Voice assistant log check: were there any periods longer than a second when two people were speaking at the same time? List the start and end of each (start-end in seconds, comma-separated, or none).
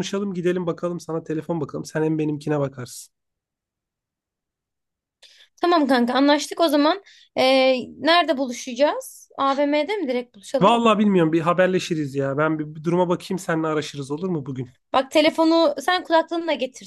none